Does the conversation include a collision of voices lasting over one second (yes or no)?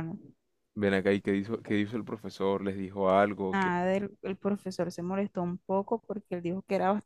no